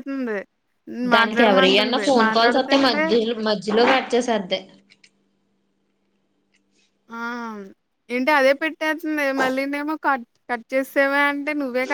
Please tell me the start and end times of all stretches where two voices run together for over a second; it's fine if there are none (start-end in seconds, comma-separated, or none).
1.2-3.0